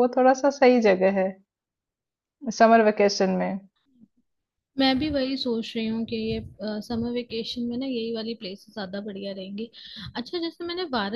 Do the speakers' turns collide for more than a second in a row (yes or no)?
no